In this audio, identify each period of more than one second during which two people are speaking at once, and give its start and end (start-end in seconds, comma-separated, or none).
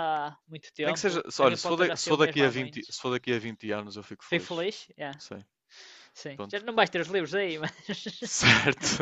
0.8-3.0